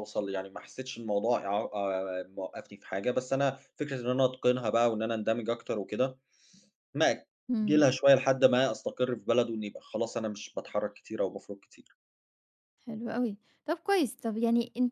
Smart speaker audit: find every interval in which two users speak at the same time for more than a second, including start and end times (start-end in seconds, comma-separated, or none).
none